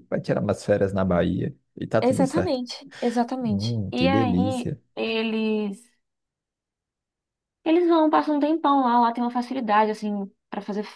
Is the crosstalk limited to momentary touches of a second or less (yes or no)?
no